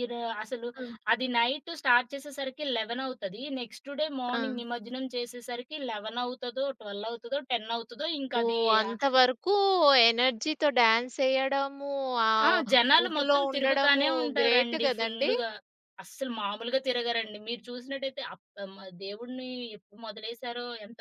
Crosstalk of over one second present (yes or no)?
yes